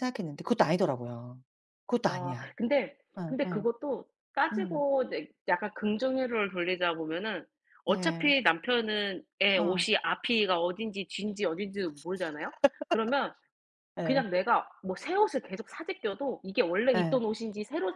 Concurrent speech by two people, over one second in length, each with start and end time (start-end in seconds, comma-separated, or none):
none